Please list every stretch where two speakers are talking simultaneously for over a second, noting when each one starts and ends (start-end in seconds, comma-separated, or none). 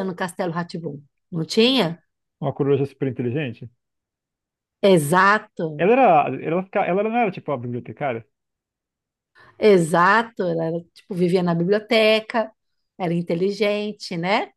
none